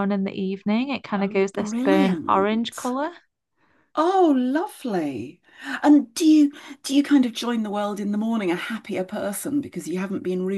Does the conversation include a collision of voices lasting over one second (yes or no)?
yes